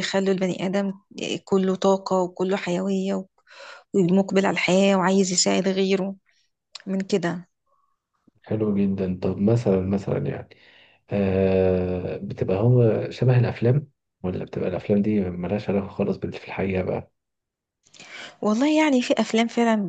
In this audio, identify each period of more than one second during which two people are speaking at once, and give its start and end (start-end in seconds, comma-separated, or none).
none